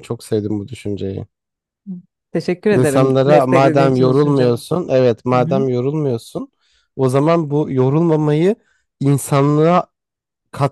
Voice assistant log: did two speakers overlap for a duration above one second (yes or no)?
yes